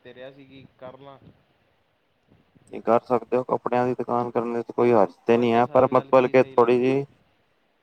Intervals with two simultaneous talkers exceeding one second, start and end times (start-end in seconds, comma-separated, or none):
5.3-7.0